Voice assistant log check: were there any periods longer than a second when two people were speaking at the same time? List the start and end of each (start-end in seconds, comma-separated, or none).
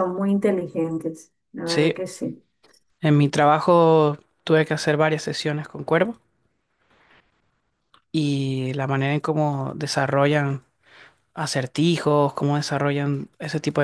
none